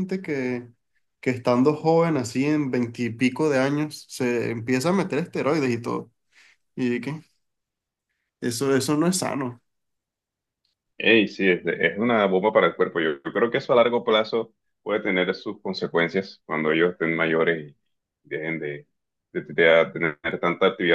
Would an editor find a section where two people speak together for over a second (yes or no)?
no